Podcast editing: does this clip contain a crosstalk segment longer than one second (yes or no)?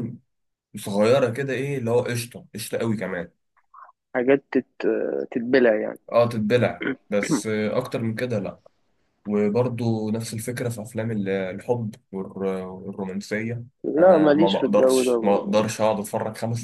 yes